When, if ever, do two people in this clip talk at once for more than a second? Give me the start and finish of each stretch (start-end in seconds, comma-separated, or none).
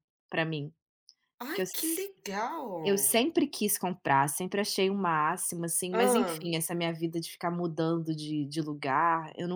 none